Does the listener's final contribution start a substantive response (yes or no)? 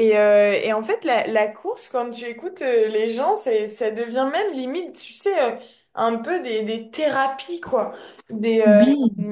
no